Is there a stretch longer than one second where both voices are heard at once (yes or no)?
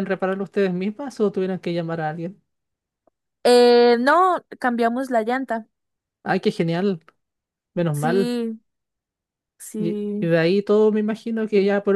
no